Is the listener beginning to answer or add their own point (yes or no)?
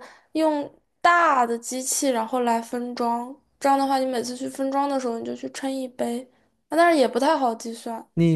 yes